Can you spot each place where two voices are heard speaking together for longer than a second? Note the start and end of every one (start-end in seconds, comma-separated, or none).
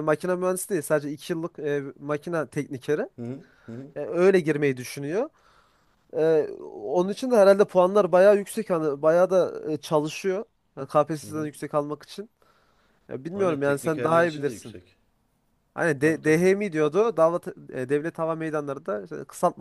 13.3-14.8